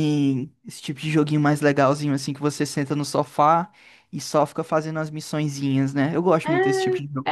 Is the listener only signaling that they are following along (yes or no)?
no